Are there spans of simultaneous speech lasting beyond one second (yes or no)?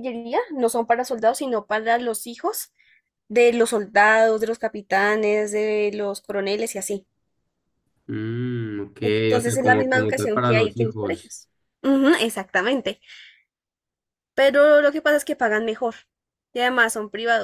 yes